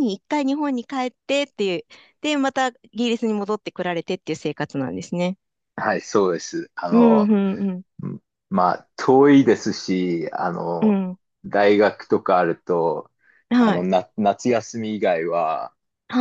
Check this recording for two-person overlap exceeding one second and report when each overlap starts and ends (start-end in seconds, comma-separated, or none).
none